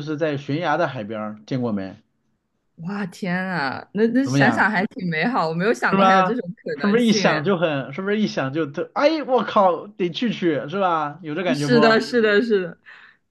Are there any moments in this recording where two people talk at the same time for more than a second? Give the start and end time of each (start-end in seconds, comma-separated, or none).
5.9-7.5